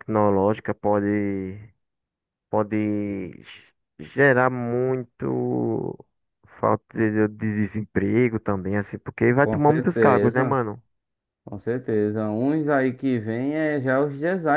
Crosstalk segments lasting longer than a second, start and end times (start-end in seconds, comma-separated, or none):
9.4-10.6